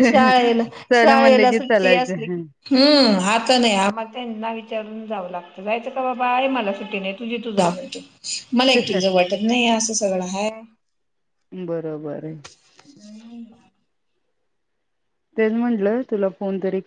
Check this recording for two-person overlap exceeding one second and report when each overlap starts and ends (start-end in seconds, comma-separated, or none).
0.9-2.4